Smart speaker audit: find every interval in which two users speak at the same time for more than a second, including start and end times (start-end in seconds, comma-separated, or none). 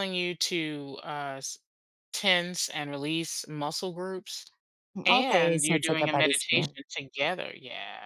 5.0-6.8